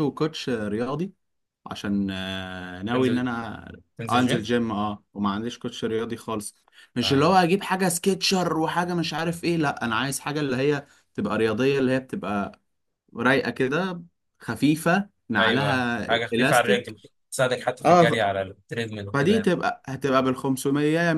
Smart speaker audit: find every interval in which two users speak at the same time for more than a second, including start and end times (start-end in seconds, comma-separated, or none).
15.4-16.9